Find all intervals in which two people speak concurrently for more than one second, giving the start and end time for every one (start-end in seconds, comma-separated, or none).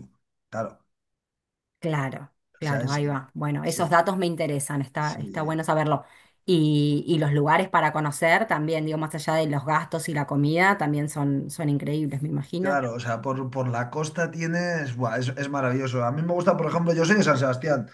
none